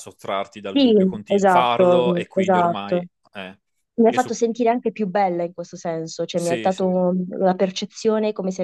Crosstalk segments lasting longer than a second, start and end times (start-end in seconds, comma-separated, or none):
0.7-3.0